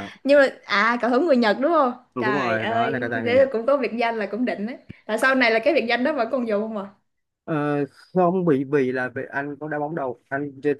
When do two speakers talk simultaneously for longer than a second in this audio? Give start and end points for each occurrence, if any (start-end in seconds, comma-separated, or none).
2.1-3.5